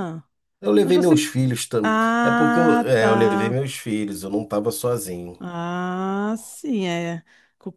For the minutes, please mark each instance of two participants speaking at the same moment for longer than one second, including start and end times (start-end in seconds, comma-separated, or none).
1.8-3.6